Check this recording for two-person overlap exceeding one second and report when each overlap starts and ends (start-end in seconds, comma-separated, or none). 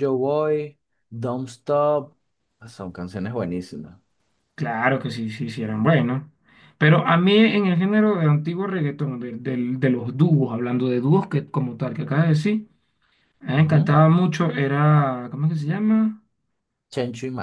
none